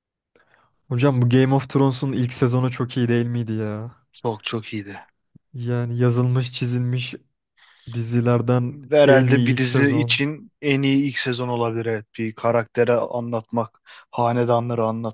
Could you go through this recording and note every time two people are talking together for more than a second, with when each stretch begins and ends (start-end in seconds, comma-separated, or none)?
8.9-10.2